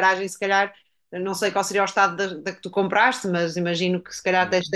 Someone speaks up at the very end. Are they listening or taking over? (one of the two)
listening